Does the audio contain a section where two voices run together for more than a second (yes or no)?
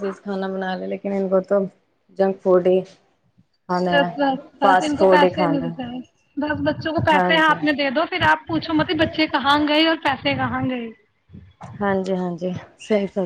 yes